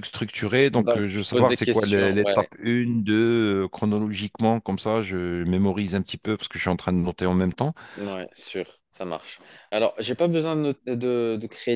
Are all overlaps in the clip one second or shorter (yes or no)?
no